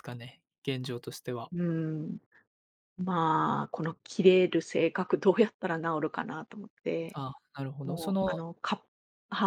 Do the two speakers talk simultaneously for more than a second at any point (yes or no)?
no